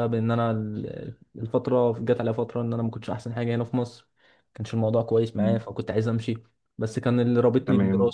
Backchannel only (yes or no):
yes